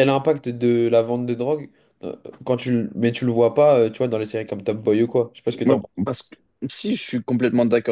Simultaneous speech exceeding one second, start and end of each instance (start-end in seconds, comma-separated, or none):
none